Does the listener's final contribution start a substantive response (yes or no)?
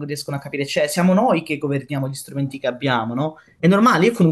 no